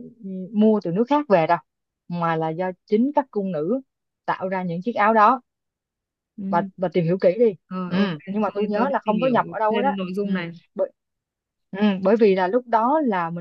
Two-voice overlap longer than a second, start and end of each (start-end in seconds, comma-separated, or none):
7.9-10.3